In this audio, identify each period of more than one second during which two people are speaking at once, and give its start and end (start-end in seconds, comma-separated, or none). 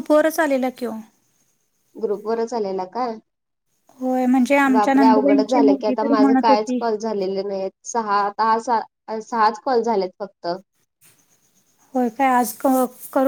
4.7-6.8